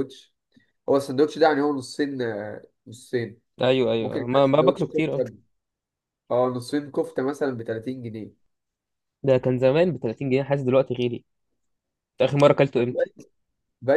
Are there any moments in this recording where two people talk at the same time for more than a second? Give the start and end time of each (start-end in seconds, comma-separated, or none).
4.0-5.2